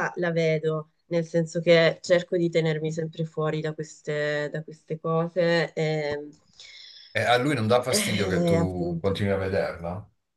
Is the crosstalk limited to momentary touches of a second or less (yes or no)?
no